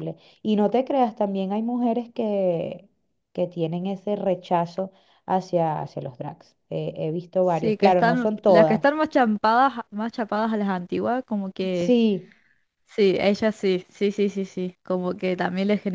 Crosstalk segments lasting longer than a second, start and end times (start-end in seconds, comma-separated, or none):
7.4-8.8